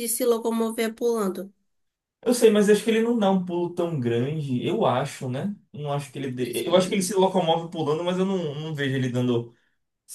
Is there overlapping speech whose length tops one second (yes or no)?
no